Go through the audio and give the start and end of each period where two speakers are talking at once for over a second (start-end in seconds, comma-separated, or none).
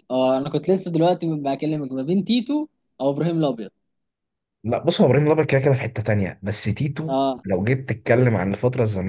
none